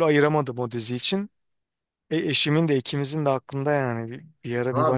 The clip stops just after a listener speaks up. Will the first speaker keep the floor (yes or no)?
no